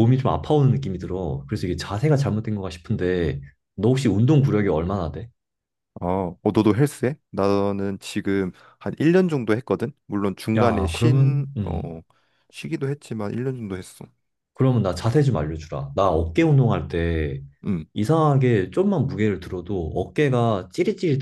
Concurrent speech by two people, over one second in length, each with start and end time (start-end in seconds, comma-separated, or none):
10.6-12.0